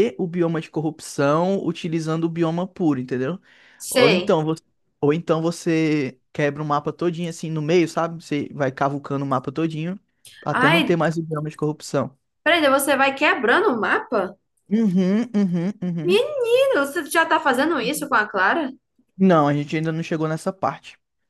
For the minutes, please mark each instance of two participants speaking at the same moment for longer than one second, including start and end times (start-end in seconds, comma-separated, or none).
none